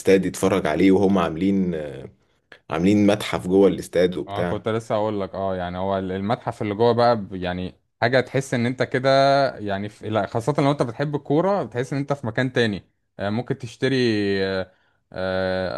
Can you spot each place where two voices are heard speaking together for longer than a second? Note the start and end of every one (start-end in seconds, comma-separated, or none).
none